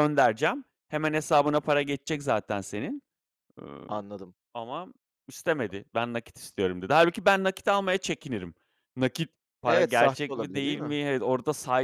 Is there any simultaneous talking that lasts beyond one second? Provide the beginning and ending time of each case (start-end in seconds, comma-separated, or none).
9.7-11.0